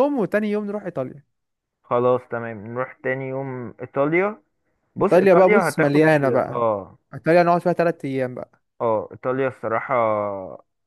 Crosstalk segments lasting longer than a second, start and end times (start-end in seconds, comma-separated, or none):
5.0-6.6